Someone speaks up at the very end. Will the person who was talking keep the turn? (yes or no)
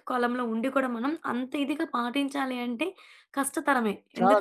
yes